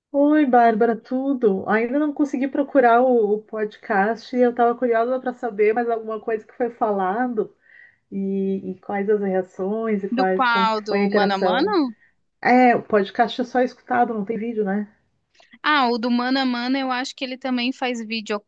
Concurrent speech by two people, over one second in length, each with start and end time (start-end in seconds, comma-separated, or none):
10.1-11.8